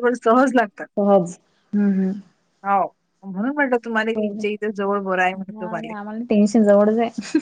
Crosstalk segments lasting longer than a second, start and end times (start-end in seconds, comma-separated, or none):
none